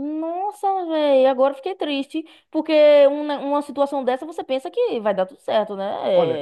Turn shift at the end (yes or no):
yes